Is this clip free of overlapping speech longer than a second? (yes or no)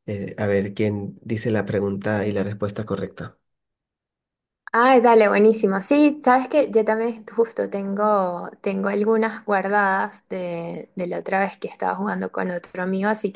yes